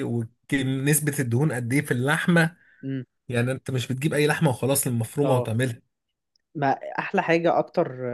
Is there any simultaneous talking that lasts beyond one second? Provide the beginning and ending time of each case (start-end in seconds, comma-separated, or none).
none